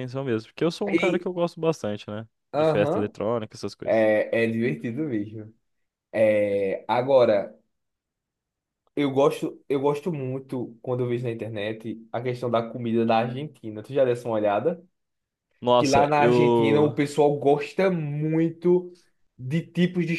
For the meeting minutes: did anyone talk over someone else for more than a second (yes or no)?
yes